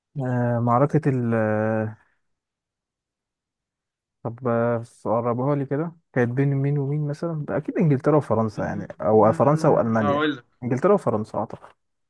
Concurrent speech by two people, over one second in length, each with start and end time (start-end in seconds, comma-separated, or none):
8.6-10.2